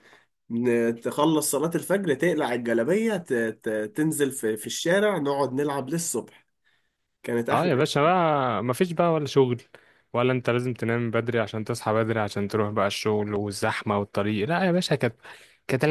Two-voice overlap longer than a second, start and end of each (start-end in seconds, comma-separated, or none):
none